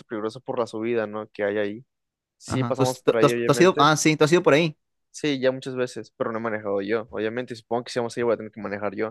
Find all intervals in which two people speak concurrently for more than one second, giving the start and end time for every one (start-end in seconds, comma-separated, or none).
2.5-3.9